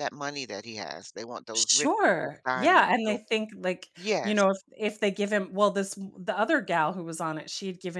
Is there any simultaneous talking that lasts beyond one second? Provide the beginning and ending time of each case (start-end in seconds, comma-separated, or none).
1.5-3.2